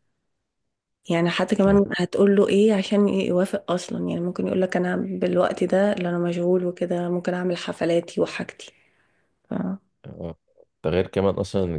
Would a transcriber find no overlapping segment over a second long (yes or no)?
yes